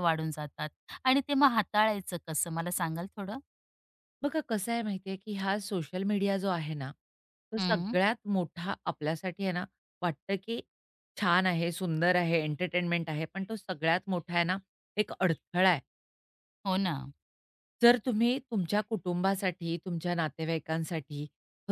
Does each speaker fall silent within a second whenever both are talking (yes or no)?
yes